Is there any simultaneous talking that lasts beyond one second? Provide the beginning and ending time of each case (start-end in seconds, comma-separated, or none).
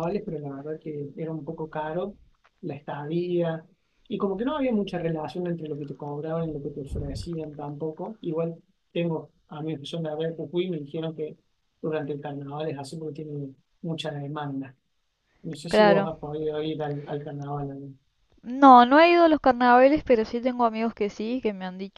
none